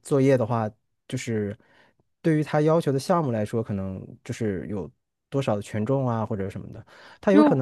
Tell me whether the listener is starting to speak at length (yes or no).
no